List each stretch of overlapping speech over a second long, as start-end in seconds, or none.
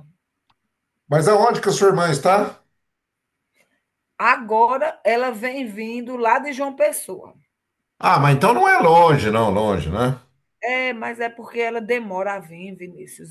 none